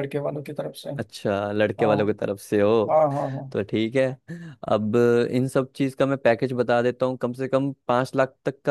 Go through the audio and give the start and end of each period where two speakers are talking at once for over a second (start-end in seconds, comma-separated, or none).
none